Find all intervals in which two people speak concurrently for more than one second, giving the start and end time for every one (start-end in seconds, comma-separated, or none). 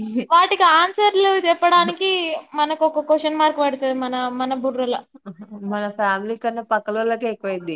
none